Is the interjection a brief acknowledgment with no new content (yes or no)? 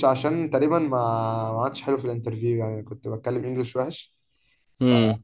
yes